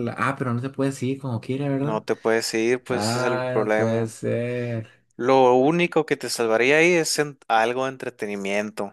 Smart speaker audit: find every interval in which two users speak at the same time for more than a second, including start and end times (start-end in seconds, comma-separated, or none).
2.9-4.1